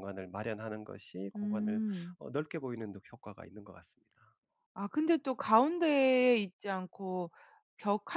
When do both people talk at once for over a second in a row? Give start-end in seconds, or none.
none